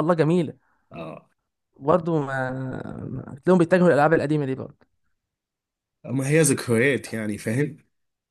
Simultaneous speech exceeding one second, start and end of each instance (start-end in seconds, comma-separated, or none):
none